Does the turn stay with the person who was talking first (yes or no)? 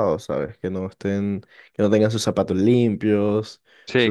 yes